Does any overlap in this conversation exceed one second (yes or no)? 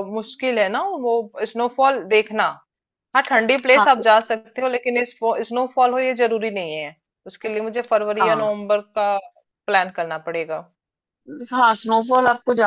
no